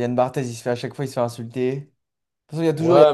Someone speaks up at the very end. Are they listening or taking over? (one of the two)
taking over